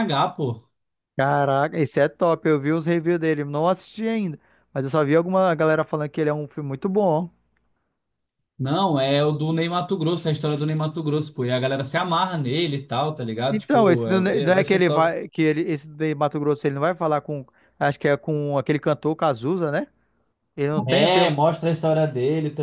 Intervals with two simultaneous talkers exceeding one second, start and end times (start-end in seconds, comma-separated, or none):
13.5-15.1